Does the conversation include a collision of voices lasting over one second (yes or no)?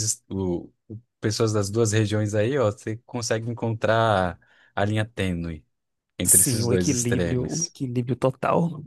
yes